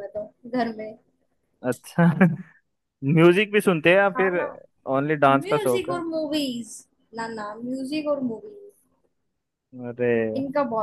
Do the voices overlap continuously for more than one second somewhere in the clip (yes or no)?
no